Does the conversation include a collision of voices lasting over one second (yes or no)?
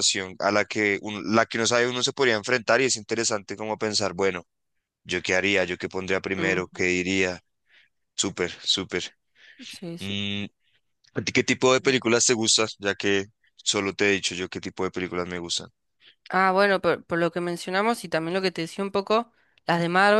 no